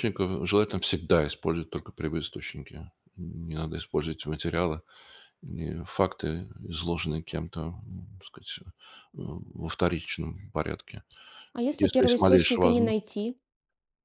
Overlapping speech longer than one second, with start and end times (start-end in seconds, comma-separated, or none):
11.7-13.0